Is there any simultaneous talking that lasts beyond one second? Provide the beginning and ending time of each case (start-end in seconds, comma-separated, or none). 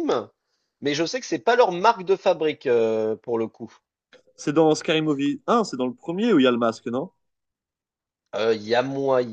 none